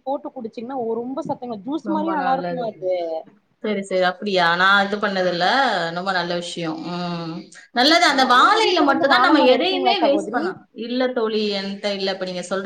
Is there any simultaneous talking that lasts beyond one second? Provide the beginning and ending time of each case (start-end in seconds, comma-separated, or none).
8.1-10.4